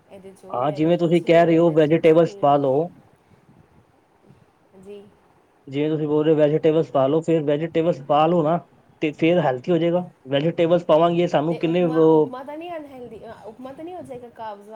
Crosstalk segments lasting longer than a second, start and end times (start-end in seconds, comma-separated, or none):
0.5-2.5